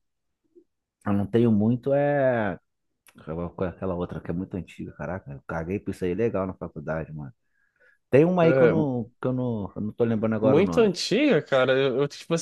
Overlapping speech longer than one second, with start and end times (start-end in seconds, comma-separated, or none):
none